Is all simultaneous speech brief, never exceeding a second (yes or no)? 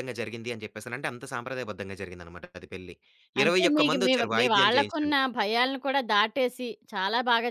no